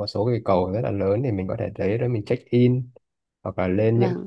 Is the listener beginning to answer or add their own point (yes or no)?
no